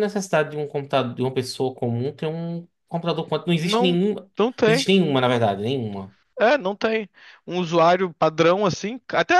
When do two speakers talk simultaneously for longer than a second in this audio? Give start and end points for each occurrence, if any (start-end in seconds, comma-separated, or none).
none